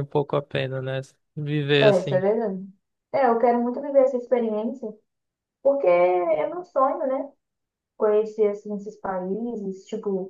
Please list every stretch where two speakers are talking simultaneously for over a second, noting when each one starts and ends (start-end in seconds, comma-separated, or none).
none